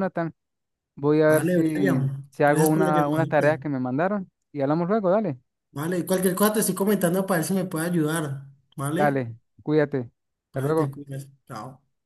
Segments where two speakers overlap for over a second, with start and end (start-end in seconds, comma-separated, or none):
1.3-3.6